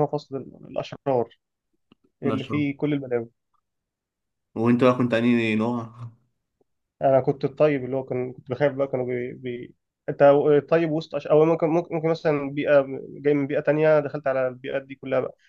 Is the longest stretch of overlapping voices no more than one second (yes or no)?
yes